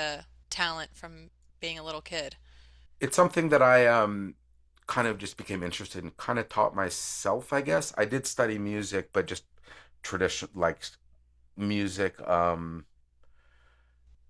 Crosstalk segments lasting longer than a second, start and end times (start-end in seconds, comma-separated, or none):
none